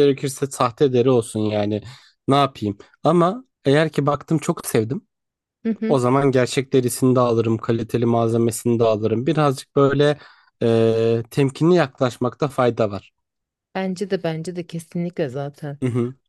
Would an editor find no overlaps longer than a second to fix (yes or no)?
yes